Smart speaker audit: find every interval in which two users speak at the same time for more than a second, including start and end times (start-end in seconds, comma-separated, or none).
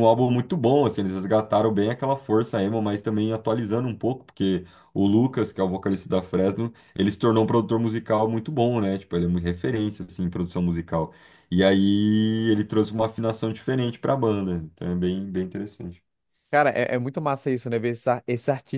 none